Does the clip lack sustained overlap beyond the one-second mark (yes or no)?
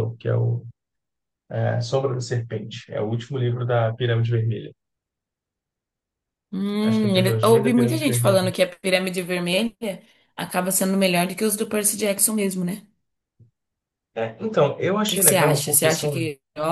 no